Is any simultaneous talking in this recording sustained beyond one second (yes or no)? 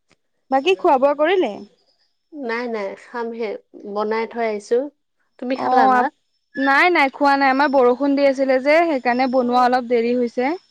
no